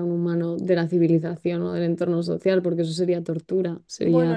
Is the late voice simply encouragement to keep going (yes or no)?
no